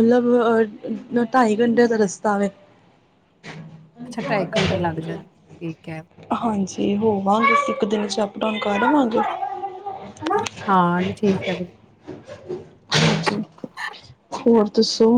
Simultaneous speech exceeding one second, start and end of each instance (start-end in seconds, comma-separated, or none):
none